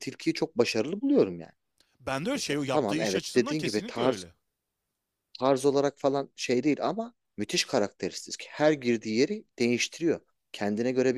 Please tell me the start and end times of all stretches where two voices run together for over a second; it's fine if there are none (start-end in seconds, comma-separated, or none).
2.3-4.2